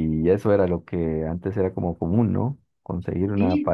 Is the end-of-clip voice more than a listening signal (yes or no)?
no